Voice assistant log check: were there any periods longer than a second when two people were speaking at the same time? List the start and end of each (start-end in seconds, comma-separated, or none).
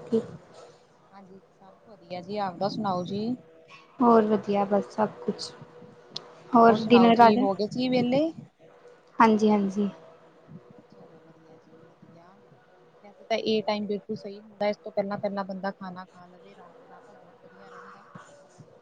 6.8-8.3